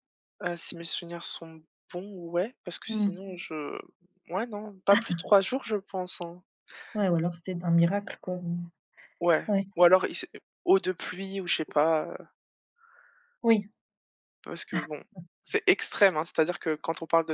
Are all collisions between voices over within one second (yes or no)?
yes